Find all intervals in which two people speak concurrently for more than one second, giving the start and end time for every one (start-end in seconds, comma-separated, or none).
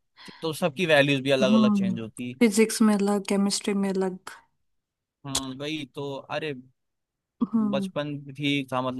none